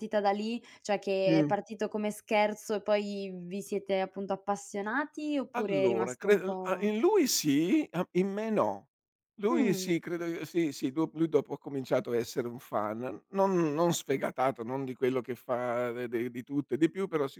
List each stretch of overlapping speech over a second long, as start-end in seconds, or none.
5.5-6.9